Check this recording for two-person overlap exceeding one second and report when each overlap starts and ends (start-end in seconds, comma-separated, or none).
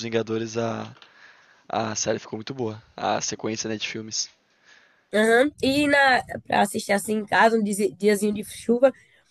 none